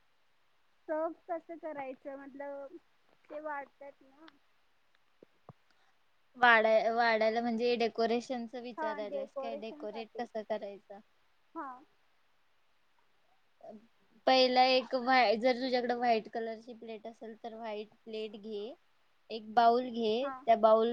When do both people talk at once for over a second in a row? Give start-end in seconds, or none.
8.8-10.3